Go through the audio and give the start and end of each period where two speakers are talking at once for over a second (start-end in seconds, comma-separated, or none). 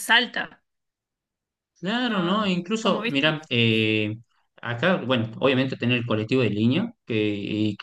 2.0-3.3